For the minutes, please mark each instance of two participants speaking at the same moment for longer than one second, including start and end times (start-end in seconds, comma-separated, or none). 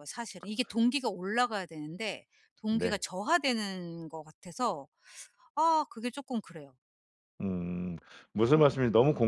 none